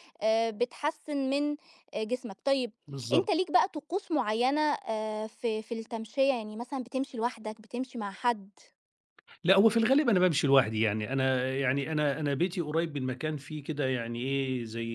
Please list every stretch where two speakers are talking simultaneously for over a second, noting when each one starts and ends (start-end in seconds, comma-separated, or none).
none